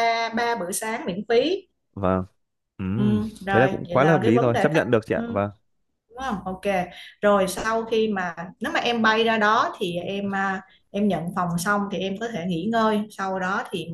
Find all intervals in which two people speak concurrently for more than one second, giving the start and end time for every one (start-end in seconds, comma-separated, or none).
3.0-5.2